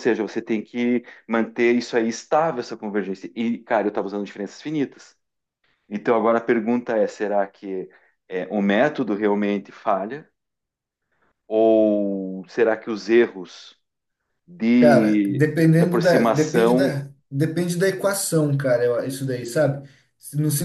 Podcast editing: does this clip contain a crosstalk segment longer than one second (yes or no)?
yes